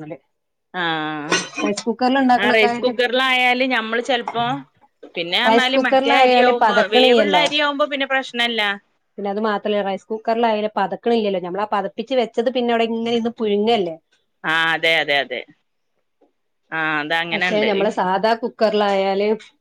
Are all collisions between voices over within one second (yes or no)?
no